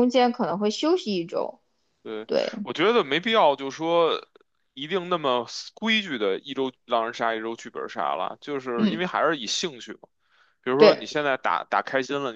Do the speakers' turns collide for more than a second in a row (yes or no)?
no